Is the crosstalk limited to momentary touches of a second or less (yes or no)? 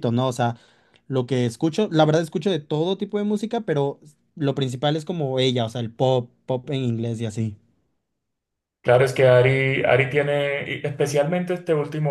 yes